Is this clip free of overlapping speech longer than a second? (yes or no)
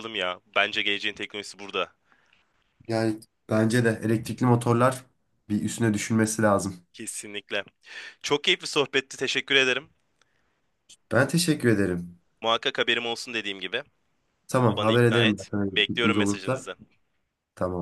no